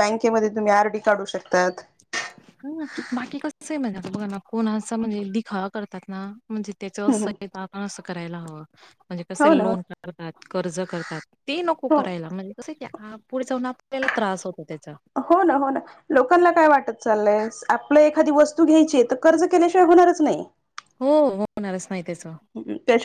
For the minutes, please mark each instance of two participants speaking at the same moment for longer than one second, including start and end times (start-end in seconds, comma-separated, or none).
none